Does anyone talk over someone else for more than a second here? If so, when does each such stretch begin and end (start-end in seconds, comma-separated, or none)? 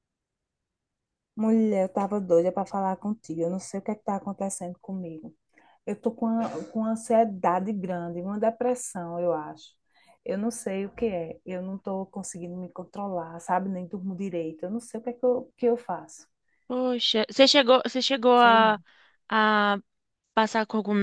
none